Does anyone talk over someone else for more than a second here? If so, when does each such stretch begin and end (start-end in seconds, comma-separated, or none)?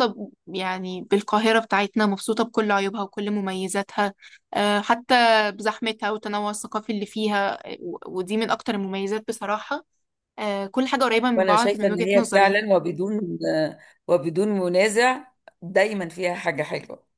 11.4-12.6